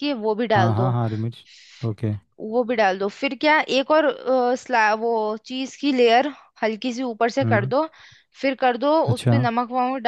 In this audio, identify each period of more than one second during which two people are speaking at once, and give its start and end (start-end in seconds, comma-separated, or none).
none